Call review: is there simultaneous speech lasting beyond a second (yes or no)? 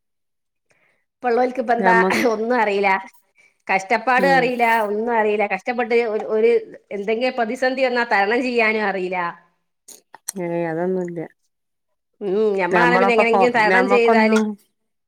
yes